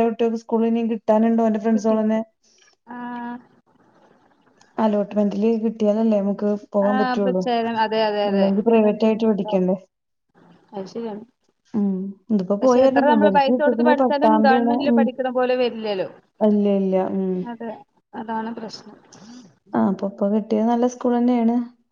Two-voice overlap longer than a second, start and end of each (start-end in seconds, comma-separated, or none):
12.6-15.0